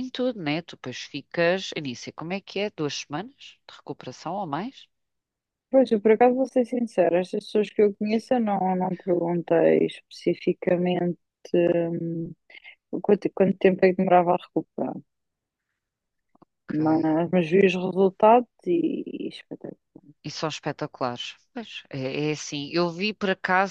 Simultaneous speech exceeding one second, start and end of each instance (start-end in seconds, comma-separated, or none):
none